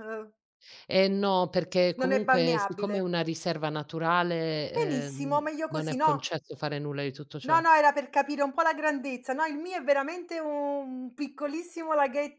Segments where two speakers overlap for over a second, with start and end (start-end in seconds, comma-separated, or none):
1.9-3.1, 4.7-6.3